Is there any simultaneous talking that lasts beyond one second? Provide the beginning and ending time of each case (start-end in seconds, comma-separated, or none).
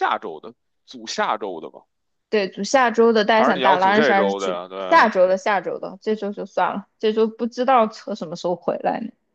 3.3-5.1